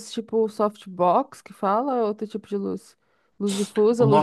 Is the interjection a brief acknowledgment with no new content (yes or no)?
no